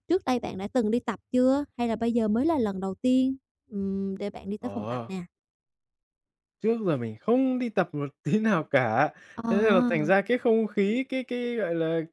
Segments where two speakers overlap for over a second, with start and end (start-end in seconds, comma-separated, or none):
none